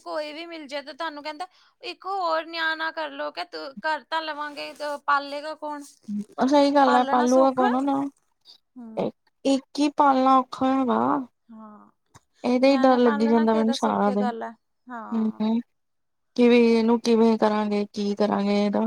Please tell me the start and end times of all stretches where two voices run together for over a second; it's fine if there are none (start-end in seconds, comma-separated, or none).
12.7-14.3